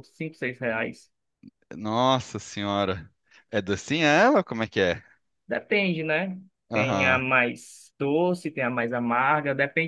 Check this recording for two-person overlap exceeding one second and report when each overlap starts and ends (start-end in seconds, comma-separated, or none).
none